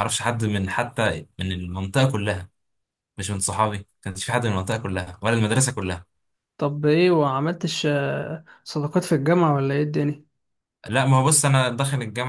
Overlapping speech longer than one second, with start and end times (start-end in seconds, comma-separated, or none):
none